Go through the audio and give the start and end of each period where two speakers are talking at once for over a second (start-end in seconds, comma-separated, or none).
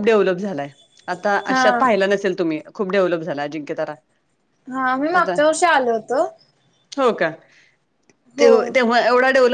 none